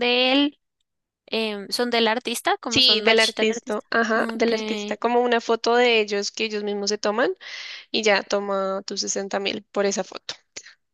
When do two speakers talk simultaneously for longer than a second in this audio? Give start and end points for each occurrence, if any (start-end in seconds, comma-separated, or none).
2.7-4.5